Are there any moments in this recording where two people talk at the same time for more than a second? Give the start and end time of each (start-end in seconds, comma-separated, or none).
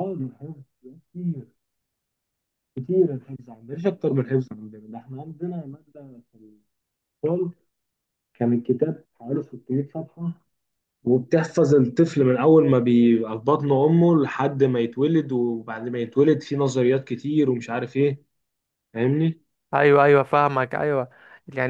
none